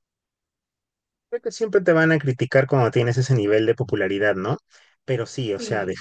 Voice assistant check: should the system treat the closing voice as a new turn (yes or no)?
no